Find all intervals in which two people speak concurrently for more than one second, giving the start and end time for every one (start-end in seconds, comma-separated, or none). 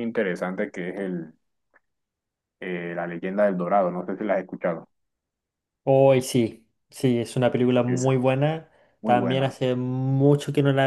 none